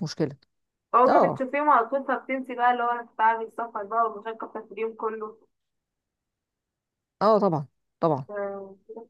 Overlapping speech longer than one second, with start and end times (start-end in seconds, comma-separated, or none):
none